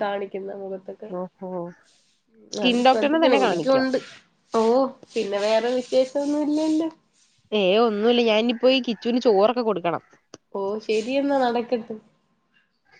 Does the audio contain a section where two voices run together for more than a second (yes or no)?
yes